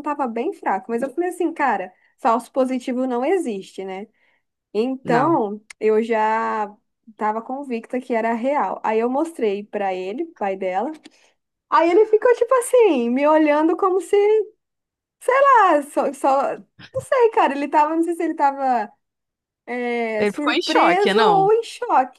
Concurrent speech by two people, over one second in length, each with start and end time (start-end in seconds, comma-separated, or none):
20.2-21.5